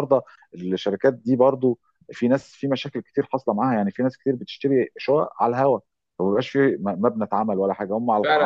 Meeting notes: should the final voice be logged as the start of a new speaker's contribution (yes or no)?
yes